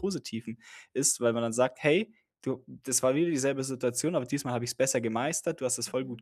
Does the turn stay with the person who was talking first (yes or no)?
no